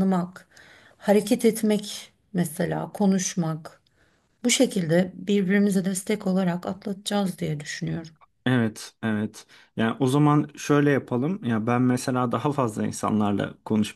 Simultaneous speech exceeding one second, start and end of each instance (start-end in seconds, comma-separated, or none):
none